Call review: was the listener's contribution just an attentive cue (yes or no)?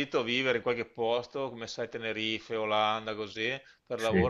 yes